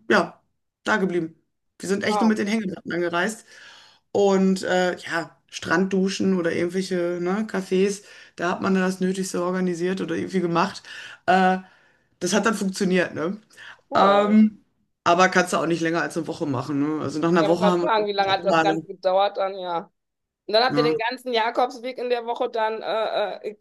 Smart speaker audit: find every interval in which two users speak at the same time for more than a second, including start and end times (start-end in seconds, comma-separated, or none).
17.4-18.9